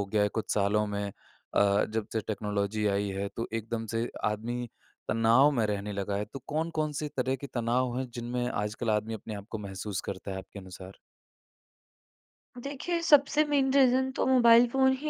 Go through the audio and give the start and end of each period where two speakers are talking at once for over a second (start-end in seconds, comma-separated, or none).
none